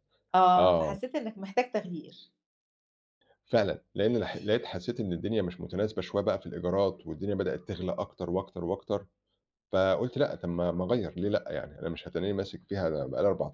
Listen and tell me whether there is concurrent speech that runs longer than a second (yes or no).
no